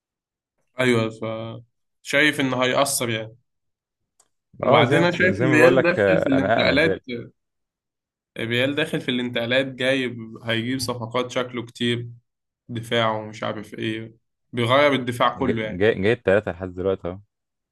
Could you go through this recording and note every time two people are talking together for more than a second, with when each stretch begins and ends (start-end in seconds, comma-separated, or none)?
4.7-7.0